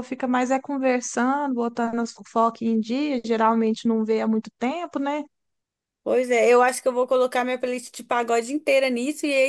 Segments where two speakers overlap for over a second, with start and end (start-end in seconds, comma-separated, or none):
none